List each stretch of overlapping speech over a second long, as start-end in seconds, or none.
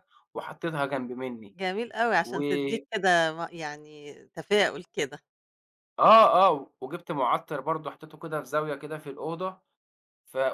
none